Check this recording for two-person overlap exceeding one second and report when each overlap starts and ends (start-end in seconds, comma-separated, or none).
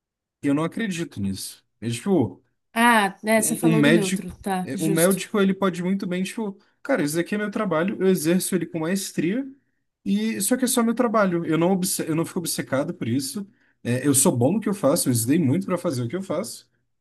3.4-5.2